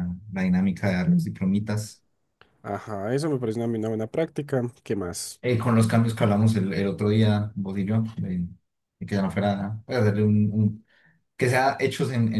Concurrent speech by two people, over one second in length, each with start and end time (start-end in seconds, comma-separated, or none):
none